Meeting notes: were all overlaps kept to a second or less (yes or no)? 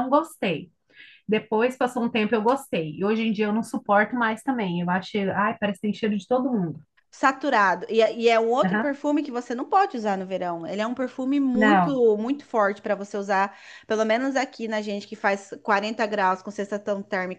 yes